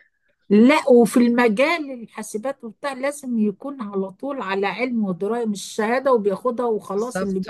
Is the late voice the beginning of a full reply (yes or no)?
no